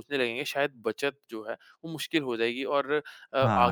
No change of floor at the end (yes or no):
yes